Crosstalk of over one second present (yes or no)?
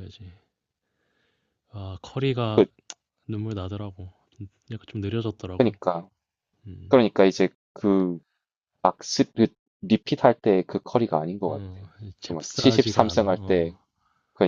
yes